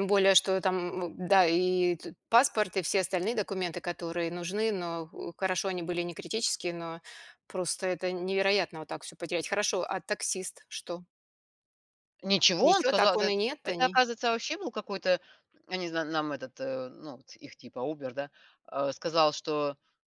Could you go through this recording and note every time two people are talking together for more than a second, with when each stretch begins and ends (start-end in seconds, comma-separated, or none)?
12.6-14.0